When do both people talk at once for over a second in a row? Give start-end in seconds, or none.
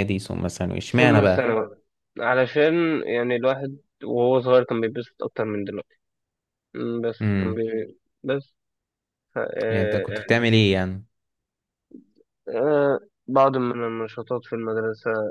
none